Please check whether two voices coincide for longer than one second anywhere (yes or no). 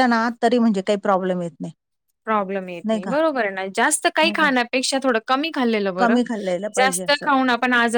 no